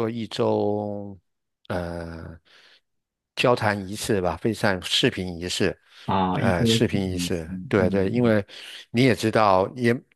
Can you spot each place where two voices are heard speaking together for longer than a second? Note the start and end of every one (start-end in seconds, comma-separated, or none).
6.3-8.3